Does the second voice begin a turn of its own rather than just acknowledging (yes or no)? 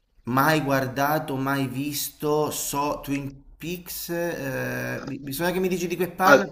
yes